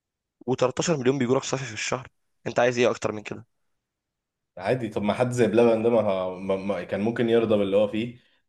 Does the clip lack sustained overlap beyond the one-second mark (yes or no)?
yes